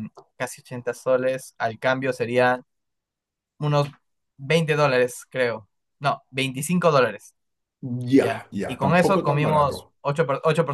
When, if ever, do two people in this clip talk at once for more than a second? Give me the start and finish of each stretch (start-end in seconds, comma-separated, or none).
8.2-9.9